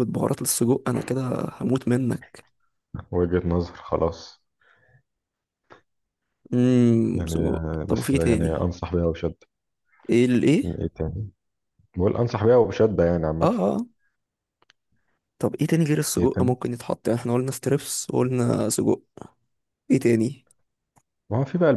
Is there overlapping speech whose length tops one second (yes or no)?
yes